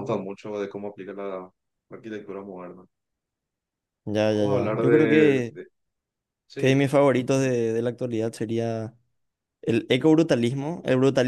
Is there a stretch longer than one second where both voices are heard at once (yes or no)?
yes